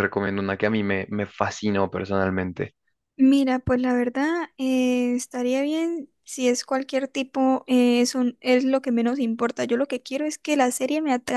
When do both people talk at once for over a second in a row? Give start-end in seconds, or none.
none